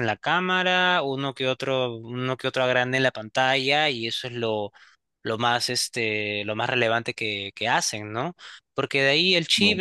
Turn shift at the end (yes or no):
no